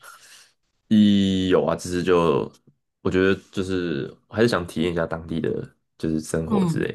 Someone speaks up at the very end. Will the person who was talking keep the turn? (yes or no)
no